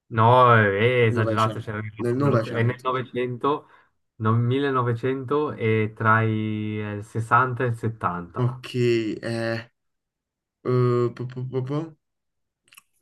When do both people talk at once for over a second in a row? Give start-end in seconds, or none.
1.0-2.9